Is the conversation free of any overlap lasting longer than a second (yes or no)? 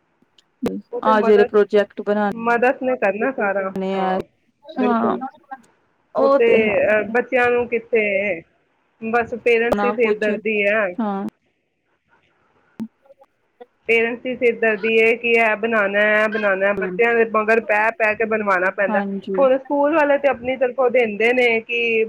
yes